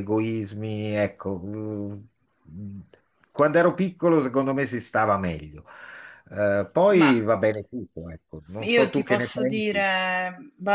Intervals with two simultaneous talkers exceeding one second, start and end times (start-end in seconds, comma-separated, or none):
8.6-9.8